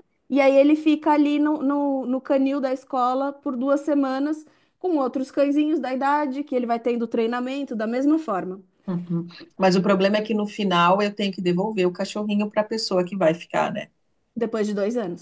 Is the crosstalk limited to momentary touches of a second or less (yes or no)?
yes